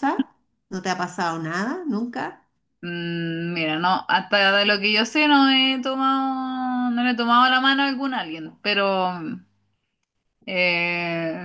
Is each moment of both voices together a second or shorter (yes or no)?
yes